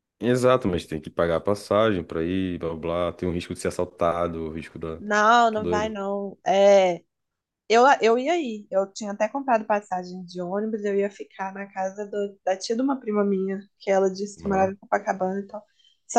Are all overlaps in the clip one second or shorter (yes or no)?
yes